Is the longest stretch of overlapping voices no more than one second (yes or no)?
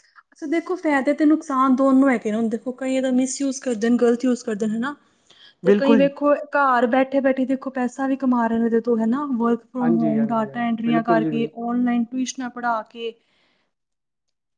no